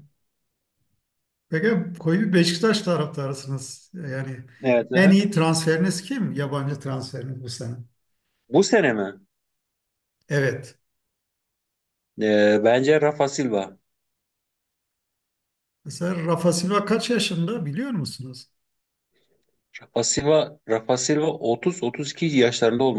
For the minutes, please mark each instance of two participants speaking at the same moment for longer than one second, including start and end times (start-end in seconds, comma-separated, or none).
none